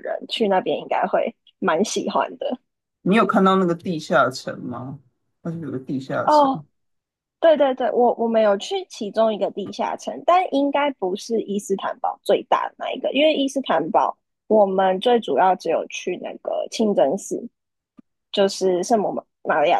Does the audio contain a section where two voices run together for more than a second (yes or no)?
no